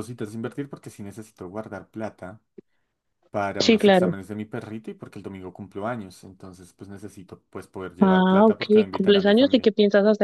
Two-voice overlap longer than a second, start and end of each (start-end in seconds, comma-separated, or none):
8.0-9.7